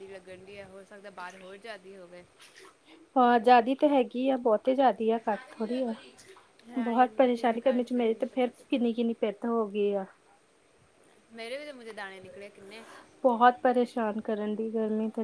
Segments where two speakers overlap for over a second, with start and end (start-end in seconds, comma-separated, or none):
6.8-8.8